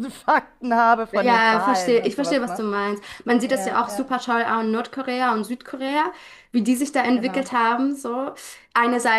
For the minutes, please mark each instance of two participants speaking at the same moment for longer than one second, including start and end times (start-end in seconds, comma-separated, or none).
1.1-2.6